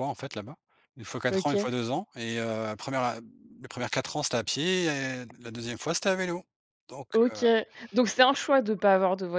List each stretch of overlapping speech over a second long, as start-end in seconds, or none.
none